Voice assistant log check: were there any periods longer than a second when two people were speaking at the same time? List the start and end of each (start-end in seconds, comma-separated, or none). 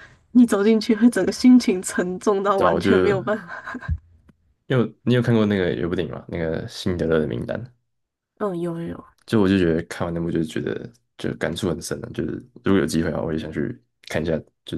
none